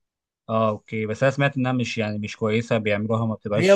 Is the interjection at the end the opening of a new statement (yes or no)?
yes